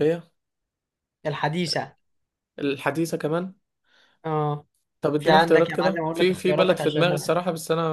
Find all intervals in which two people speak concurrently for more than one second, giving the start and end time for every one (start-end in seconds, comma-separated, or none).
5.2-7.1